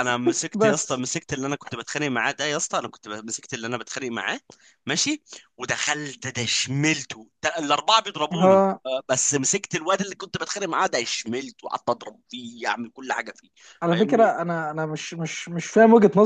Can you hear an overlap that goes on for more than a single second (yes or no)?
no